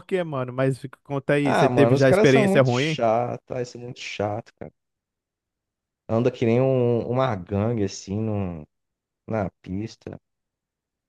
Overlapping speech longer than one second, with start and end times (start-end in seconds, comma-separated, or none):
1.4-3.0